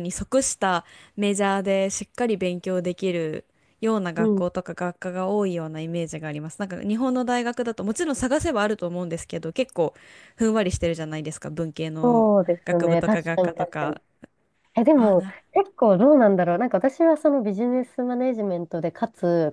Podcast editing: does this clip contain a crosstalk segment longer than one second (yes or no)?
yes